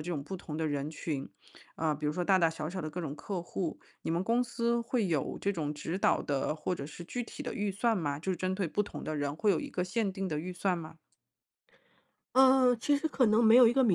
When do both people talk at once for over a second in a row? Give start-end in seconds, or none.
none